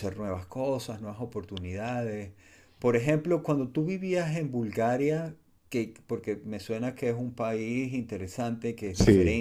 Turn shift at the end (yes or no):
no